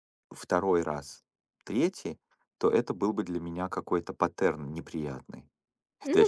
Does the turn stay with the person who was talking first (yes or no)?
no